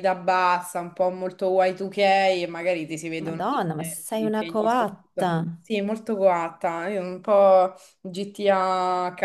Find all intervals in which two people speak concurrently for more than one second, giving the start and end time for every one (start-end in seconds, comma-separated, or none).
3.2-4.9